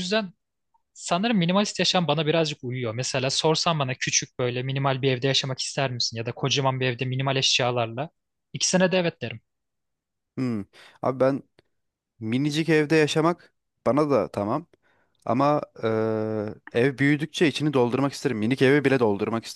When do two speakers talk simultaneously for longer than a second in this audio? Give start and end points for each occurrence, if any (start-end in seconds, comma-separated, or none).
none